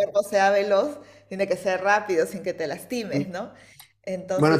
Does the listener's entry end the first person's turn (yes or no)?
yes